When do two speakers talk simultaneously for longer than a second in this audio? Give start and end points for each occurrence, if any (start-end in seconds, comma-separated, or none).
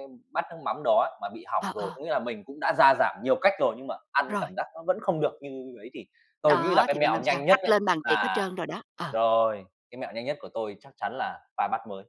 6.4-8.5